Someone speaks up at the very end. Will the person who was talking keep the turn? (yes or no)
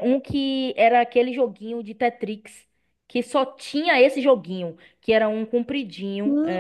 no